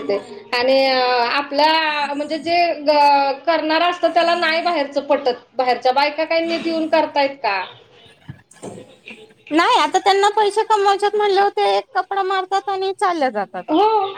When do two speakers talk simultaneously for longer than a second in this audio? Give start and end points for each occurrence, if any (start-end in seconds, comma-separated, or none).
none